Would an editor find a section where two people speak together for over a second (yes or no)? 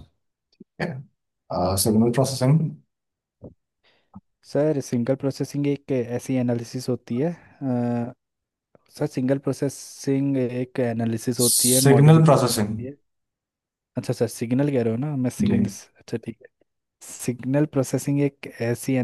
yes